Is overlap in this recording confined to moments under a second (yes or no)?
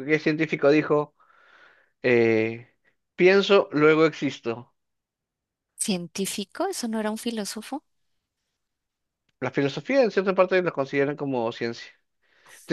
yes